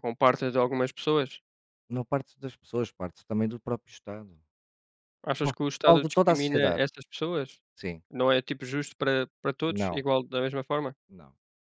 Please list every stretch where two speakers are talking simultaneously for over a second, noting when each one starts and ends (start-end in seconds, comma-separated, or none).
5.5-6.8